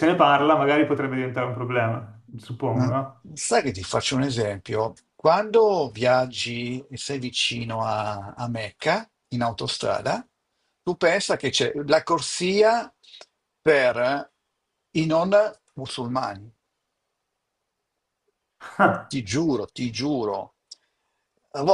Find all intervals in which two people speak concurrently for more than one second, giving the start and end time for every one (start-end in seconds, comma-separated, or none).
none